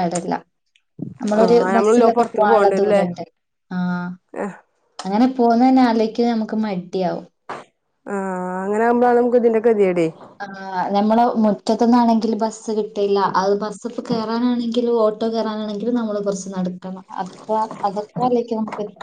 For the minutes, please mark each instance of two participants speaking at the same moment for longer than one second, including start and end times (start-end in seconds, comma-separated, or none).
1.4-3.0